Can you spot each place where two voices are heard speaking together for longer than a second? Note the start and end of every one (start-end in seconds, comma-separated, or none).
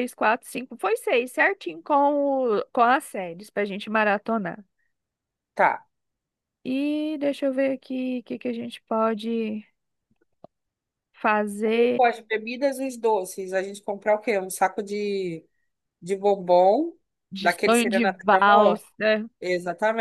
17.4-18.8